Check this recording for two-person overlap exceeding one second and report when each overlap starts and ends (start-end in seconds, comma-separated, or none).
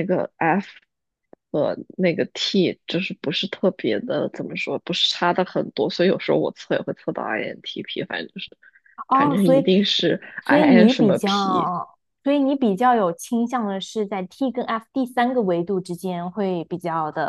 10.4-11.7